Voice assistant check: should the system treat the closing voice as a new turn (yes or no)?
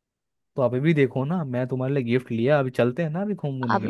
yes